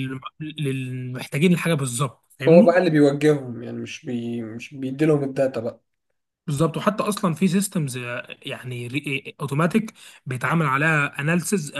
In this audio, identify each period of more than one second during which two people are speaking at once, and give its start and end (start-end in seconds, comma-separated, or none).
none